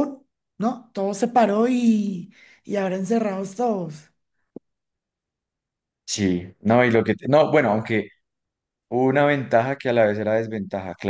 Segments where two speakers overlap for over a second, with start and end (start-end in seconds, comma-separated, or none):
none